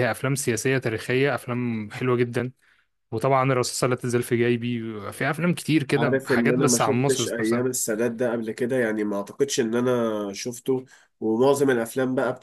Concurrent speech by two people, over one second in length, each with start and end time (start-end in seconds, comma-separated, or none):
6.0-7.8